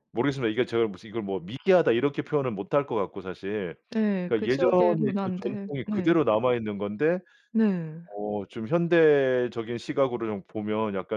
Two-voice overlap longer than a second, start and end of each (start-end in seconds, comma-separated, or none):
4.3-6.1